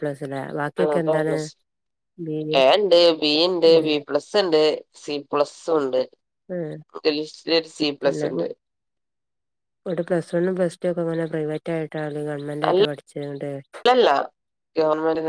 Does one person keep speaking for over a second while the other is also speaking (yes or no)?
no